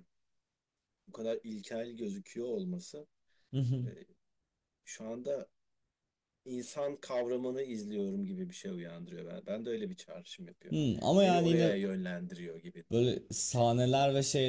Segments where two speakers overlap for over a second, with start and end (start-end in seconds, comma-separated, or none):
none